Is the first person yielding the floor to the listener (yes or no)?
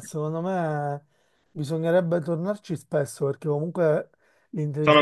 yes